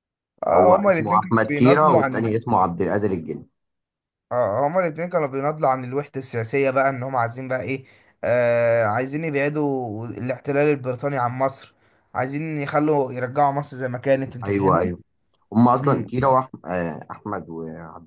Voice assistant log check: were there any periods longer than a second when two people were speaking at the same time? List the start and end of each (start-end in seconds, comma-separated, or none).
0.5-2.3